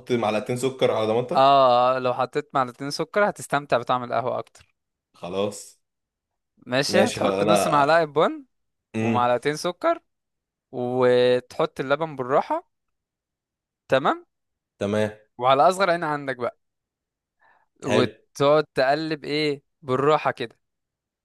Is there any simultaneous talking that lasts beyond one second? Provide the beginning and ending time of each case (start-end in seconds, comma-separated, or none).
6.9-8.1